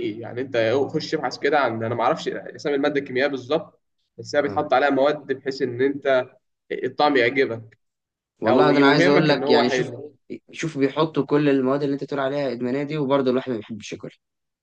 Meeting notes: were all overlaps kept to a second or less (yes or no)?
no